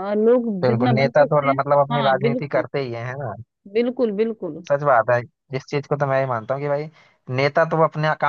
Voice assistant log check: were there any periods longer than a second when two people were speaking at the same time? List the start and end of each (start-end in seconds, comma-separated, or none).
0.6-2.6